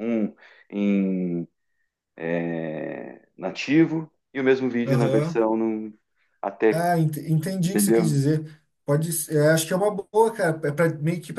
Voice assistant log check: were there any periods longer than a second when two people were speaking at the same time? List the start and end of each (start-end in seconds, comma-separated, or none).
none